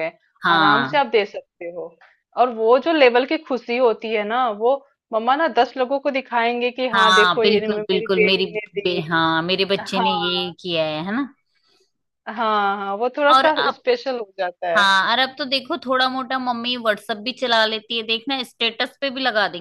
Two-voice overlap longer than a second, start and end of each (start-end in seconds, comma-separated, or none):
6.9-9.1